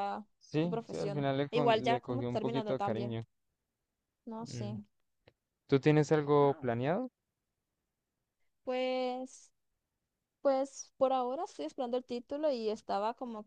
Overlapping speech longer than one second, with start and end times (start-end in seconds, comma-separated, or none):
0.6-3.2